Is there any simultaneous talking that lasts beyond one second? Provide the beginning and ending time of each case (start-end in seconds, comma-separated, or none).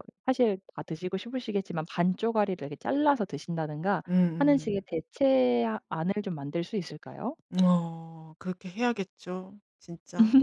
none